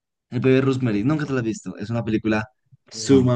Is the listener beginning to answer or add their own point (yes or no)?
no